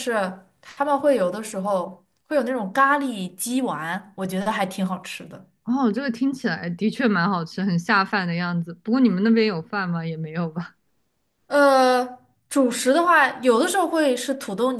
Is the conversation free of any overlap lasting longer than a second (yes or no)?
yes